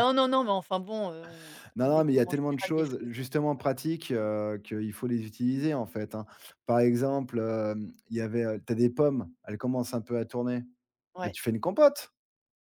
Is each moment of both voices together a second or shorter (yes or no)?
no